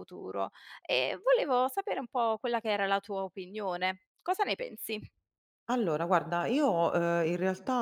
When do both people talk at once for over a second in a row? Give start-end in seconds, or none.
none